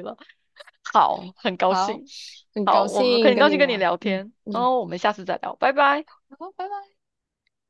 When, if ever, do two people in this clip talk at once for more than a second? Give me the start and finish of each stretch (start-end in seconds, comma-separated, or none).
2.6-4.7